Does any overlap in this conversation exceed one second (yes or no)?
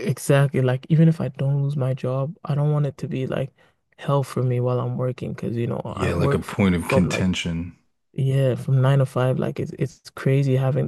yes